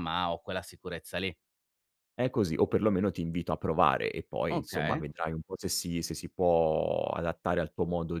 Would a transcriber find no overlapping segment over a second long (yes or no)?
yes